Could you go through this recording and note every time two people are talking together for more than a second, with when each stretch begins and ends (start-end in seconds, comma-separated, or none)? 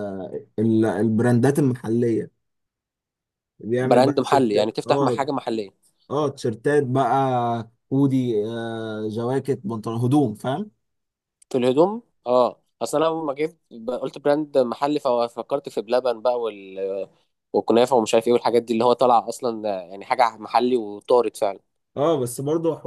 3.8-5.3